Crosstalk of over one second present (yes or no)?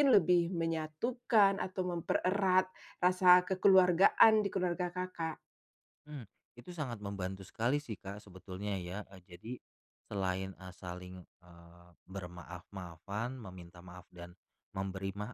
no